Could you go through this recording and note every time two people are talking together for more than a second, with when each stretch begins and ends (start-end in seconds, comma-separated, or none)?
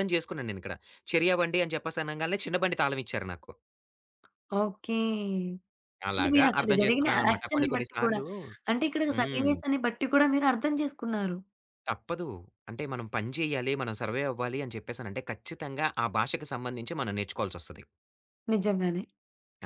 6.1-8.2